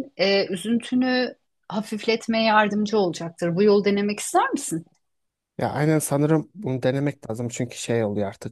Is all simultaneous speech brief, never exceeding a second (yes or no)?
yes